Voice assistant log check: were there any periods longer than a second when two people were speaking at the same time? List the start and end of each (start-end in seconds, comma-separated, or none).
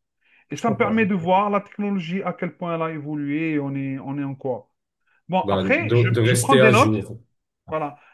5.4-7.0